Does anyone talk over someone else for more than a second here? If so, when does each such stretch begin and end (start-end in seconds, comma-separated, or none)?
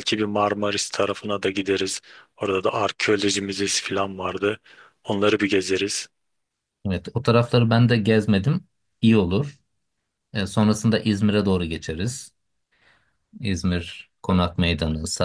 none